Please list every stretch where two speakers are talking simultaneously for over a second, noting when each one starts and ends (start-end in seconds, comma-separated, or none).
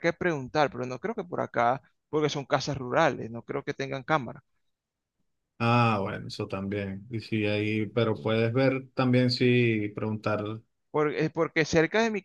none